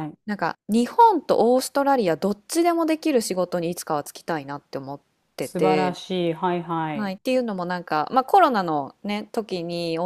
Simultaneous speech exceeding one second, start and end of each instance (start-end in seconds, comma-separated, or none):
none